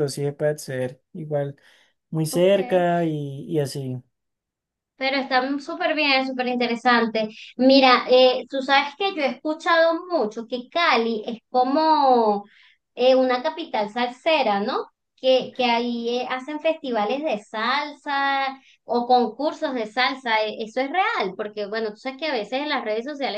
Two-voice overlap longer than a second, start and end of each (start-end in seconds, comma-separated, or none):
none